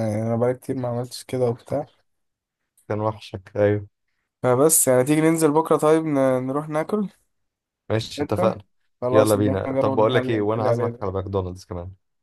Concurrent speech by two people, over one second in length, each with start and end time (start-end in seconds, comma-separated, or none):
9.1-11.1